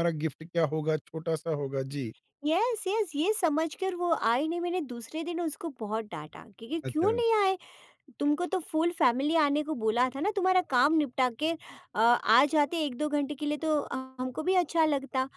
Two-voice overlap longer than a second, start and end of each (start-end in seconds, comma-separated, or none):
none